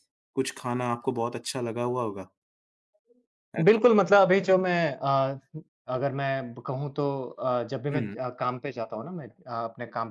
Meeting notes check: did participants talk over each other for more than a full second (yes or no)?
no